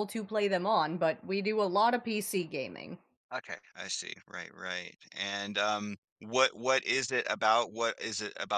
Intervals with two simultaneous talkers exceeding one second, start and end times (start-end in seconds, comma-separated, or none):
none